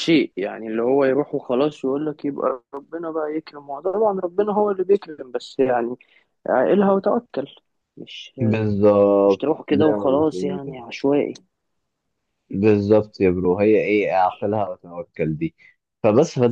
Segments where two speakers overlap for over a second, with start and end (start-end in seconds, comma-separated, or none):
9.3-10.8